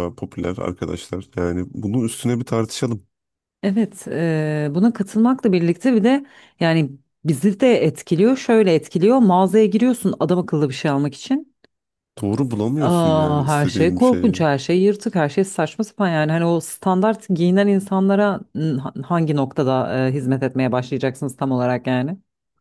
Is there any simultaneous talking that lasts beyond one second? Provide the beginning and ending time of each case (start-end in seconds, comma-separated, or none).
12.8-14.4